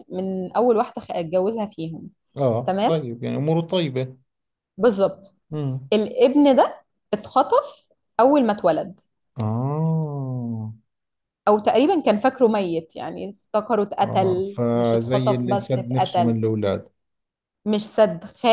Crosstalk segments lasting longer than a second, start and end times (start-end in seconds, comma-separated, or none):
14.1-16.4